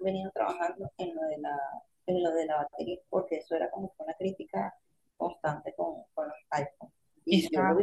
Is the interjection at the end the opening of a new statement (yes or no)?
no